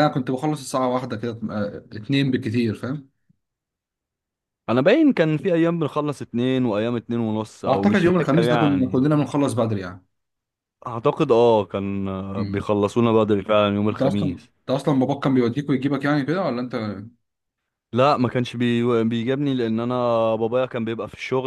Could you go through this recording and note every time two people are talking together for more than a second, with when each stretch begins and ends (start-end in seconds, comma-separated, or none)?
7.6-9.1